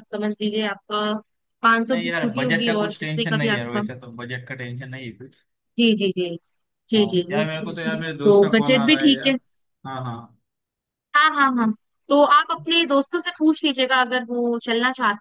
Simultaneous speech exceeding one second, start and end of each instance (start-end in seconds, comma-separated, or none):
1.9-3.8, 7.0-9.3